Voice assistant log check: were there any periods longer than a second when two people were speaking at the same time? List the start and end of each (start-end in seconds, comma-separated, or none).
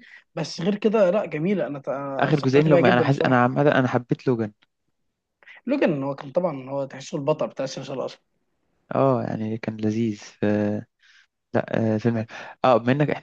2.2-3.5